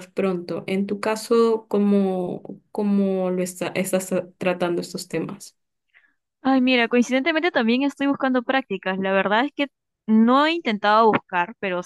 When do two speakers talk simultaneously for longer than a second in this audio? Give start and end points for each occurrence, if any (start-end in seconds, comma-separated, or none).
none